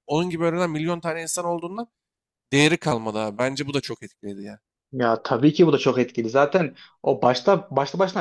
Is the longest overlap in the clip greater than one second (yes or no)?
no